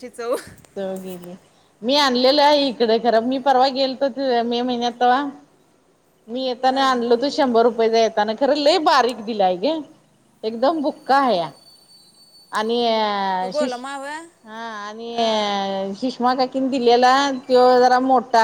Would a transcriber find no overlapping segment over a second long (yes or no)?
yes